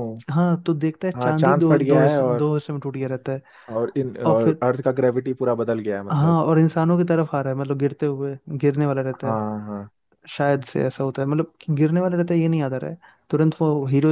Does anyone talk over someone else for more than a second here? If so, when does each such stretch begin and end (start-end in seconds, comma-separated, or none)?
1.1-2.5